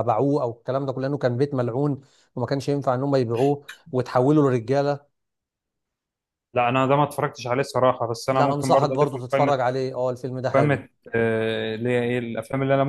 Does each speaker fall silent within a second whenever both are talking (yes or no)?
no